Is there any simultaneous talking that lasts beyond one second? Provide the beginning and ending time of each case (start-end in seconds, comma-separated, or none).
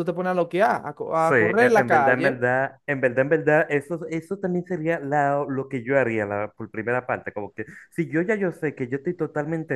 1.1-2.4